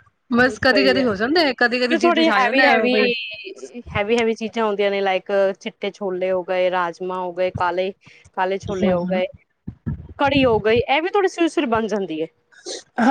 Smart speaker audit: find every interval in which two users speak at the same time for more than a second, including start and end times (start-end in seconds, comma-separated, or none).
0.7-2.7